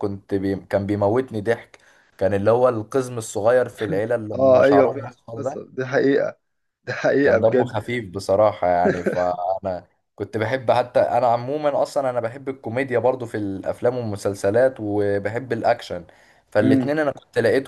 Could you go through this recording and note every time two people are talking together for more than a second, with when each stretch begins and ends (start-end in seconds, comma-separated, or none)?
4.3-5.7